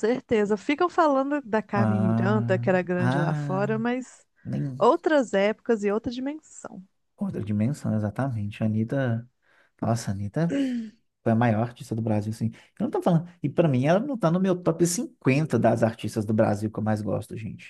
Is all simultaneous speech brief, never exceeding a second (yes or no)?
no